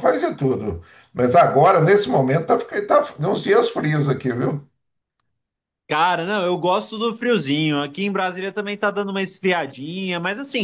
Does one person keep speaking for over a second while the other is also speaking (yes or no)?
no